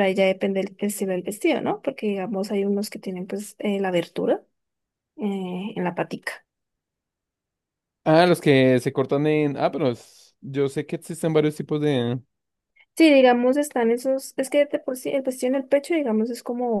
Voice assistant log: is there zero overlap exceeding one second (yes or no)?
yes